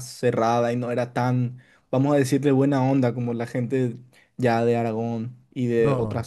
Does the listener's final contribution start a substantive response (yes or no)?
yes